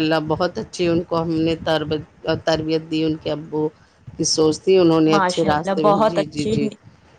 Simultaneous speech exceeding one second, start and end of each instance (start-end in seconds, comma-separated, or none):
5.1-6.7